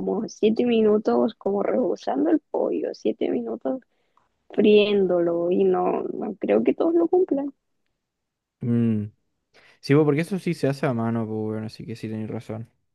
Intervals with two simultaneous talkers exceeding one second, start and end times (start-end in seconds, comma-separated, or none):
none